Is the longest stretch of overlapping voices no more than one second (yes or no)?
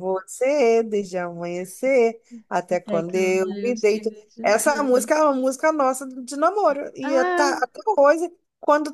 no